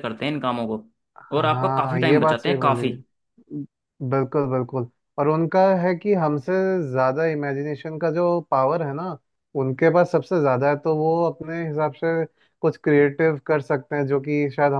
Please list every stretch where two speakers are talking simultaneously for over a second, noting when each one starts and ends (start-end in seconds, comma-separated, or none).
1.4-2.9